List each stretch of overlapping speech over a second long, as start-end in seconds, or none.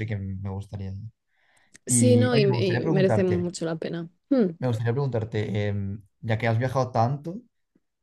1.9-3.5